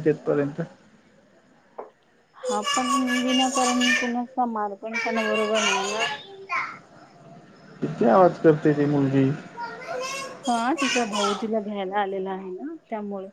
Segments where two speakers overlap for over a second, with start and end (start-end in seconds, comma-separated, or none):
none